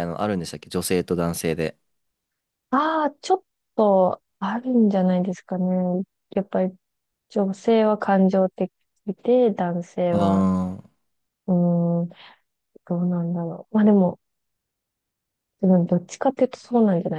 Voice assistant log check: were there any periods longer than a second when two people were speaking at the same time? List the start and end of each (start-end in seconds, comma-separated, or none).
none